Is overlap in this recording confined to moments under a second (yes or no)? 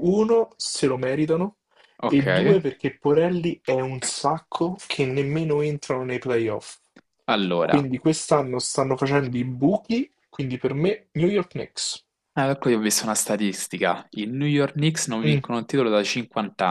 yes